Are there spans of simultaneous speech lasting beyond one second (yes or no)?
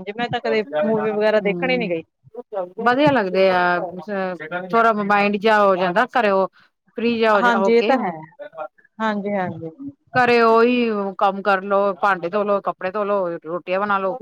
no